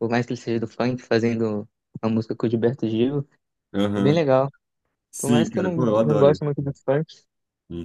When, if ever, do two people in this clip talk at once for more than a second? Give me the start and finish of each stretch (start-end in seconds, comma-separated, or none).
5.2-6.8